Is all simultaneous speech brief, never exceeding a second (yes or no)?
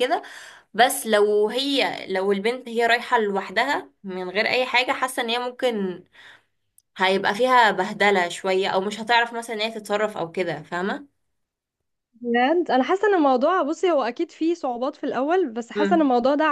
yes